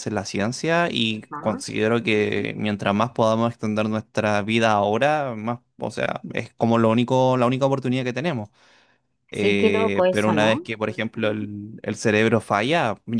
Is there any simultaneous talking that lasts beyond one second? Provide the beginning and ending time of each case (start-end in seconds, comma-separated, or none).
9.3-10.7